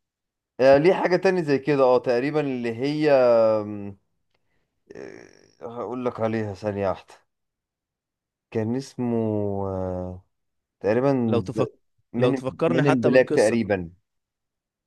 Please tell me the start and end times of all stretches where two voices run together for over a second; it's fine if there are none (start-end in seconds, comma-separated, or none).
12.2-13.6